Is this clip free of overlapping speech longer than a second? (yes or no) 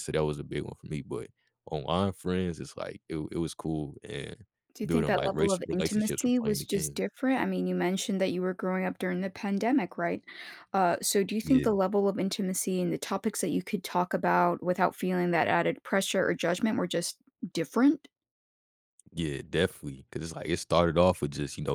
no